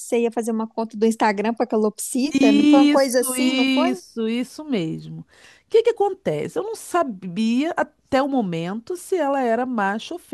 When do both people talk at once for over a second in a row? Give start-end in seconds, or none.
2.3-4.0